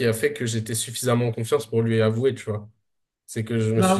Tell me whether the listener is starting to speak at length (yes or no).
no